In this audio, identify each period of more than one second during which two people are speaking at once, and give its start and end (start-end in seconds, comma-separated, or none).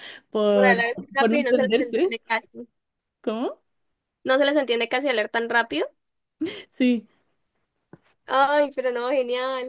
0.5-2.1